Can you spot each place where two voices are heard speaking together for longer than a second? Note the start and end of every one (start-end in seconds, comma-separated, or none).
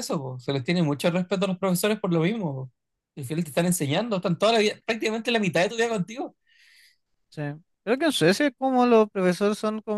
none